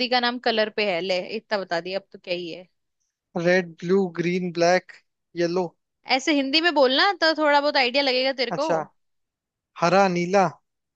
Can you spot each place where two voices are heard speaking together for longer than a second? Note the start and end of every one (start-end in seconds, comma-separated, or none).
none